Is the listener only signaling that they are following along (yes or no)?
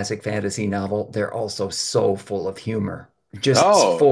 yes